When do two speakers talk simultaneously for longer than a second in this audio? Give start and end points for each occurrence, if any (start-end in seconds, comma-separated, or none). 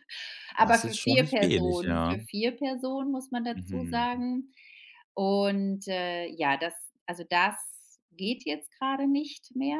0.6-2.2